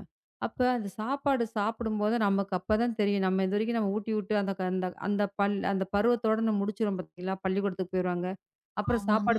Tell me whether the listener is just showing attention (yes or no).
yes